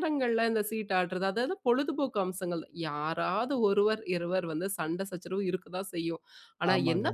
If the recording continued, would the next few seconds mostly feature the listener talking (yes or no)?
no